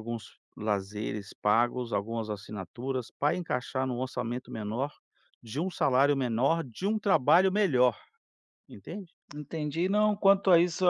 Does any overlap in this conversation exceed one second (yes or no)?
no